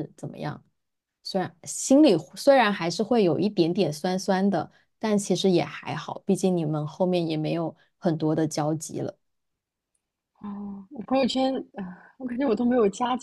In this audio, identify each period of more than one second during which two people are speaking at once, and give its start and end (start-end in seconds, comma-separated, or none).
none